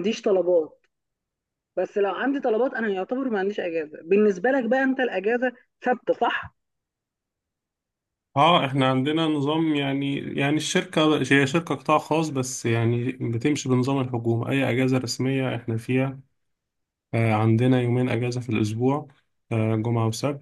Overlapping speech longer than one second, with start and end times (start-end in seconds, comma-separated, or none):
none